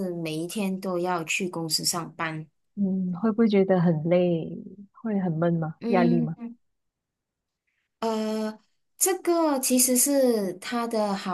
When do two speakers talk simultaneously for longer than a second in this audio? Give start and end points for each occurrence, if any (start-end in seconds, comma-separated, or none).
none